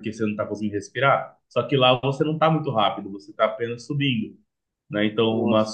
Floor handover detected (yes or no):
no